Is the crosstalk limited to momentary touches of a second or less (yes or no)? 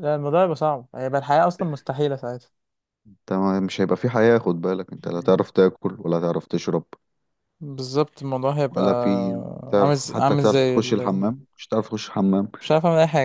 no